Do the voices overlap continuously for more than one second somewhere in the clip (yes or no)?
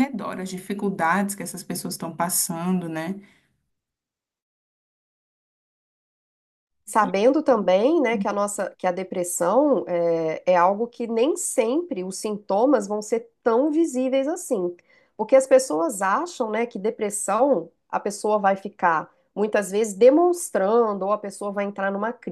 no